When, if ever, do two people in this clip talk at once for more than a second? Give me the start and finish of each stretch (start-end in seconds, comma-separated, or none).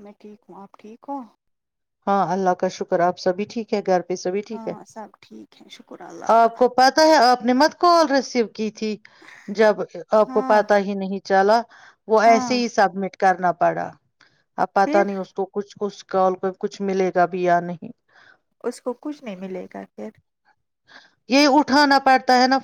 none